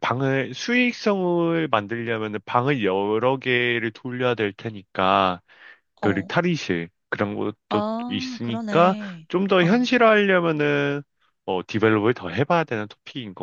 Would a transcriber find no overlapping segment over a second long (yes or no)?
no